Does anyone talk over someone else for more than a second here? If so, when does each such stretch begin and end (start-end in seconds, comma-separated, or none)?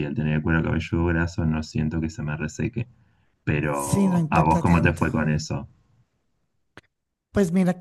3.7-5.0